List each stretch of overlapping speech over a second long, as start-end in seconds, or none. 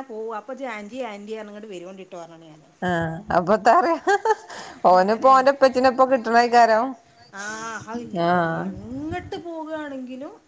none